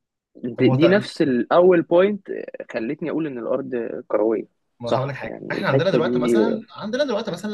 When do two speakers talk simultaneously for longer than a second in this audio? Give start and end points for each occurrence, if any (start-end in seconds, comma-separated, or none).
4.8-6.3